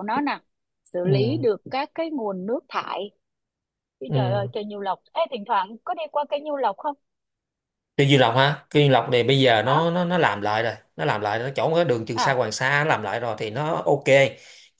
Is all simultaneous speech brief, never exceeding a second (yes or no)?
yes